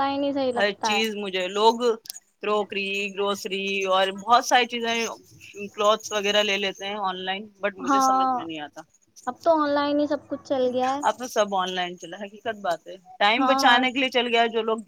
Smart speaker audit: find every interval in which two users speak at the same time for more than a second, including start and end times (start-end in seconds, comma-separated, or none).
none